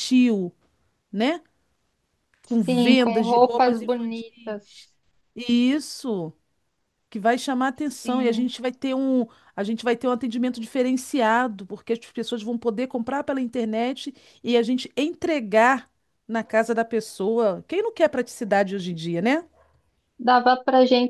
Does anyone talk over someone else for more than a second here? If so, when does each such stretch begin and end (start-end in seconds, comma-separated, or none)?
2.6-4.9